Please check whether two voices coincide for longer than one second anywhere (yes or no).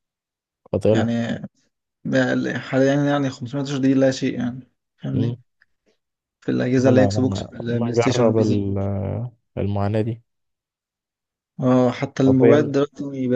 yes